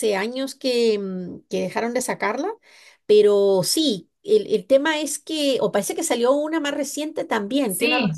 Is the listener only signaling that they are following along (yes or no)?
no